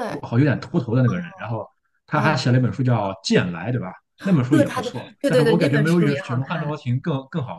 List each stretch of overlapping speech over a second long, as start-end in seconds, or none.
4.5-6.8